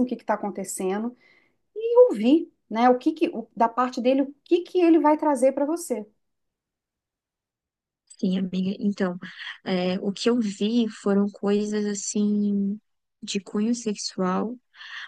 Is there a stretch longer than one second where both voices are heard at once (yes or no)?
no